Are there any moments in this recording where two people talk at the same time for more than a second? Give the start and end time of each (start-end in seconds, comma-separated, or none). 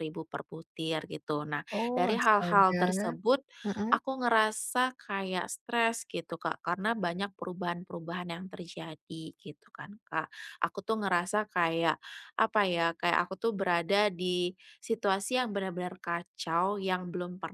1.7-3.1